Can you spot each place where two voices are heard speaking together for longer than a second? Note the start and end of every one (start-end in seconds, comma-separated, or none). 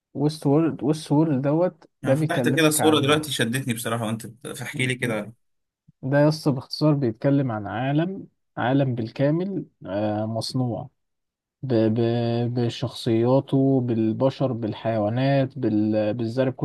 2.0-3.3